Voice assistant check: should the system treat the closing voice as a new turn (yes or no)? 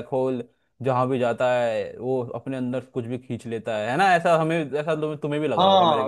yes